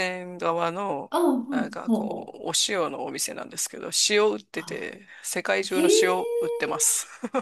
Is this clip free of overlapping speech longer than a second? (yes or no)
yes